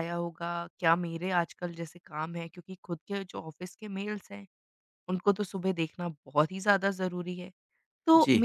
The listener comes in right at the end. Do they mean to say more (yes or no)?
no